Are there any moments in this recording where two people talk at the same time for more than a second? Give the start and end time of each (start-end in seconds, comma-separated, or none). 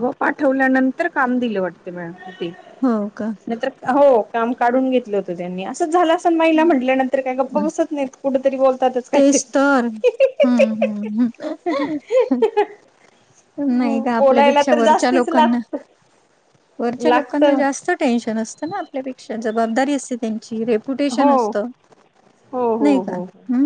14.2-15.6